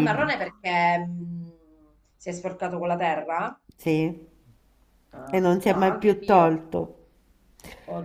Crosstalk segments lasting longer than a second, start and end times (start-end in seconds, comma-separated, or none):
5.3-6.7